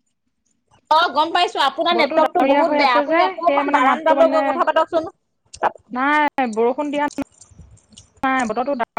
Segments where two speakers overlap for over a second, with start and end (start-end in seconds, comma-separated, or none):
2.0-4.4